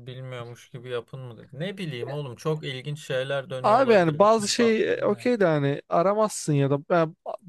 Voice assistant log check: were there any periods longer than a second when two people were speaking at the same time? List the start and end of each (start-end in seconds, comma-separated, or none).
3.6-5.3